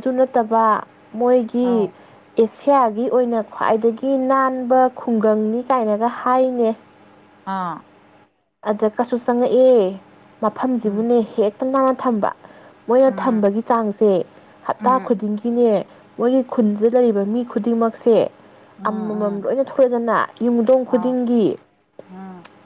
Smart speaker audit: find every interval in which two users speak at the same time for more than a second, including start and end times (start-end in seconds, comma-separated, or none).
none